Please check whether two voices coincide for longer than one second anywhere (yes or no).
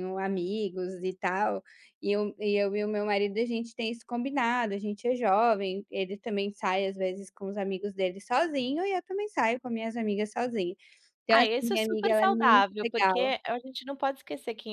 yes